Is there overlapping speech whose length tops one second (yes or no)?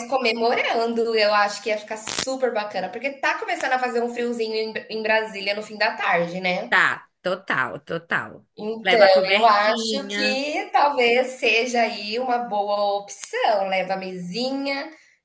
yes